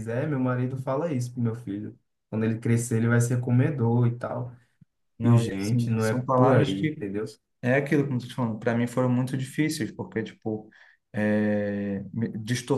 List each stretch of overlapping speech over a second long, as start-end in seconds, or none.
5.2-7.0